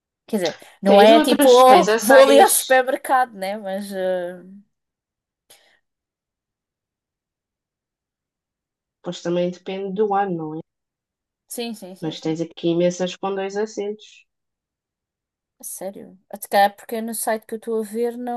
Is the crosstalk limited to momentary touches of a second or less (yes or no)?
no